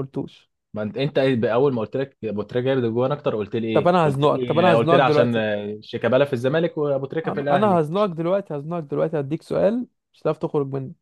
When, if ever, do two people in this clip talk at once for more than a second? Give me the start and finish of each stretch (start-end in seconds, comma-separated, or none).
3.7-5.5